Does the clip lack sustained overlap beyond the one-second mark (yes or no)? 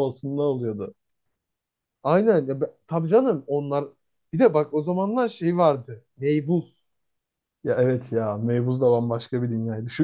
yes